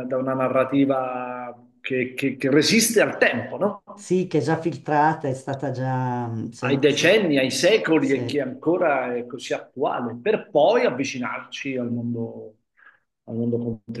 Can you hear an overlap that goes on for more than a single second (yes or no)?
no